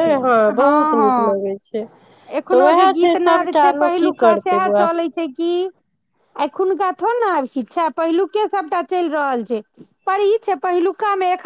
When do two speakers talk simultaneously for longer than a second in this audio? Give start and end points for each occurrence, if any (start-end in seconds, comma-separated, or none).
2.5-4.9